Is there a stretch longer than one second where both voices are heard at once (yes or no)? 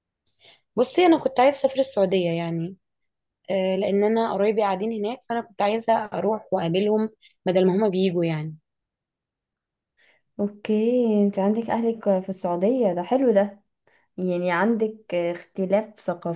no